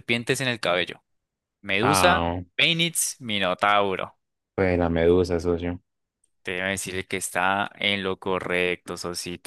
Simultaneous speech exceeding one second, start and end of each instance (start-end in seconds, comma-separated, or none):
none